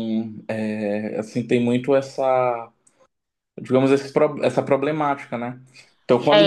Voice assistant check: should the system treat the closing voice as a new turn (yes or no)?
no